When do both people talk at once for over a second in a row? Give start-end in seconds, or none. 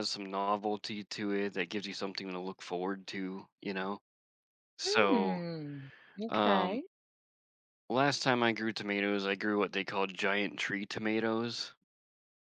none